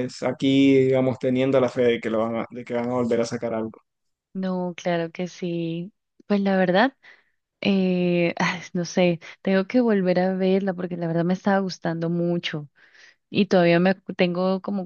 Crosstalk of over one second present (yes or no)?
no